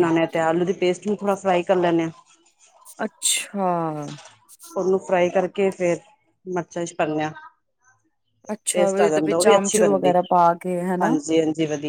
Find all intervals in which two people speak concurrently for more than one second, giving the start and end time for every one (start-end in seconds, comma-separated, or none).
8.8-10.1